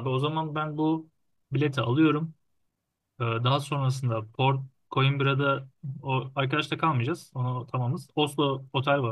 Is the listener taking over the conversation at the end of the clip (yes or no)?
no